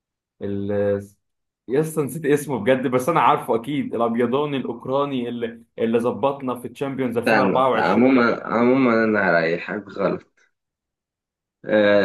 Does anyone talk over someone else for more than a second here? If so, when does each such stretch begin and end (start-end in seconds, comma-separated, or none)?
7.0-8.2